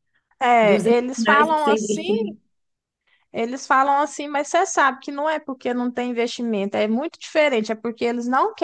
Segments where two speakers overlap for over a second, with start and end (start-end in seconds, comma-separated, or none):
0.6-2.0